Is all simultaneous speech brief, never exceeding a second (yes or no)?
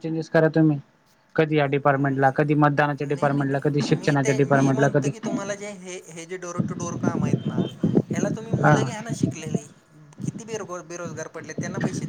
no